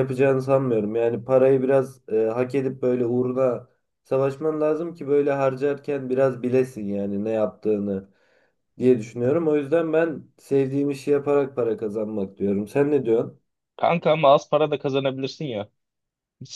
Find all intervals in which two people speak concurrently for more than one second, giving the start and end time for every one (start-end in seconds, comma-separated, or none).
none